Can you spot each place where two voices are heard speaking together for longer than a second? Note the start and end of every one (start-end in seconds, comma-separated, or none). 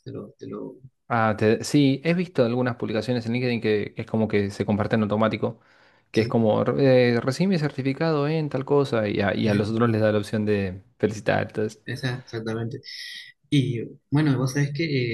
none